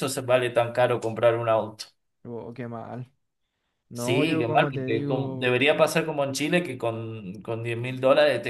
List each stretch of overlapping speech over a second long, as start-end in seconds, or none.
3.9-5.7